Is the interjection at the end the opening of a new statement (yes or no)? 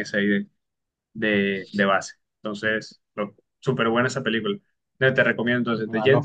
no